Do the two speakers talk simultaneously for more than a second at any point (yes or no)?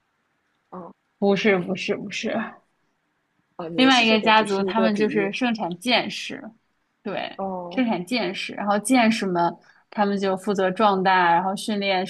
yes